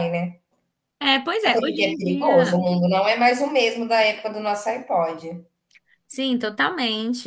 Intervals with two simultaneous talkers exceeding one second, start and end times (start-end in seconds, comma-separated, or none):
1.4-2.6